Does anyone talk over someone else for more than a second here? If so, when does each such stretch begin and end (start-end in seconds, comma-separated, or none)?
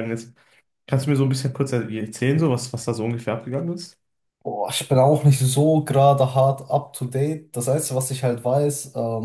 none